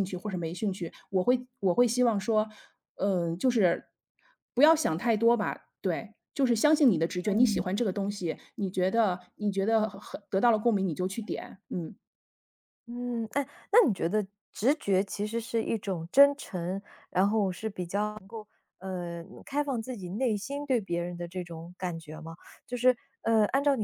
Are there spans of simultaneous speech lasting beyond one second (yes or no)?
no